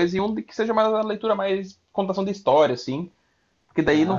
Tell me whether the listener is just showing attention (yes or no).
yes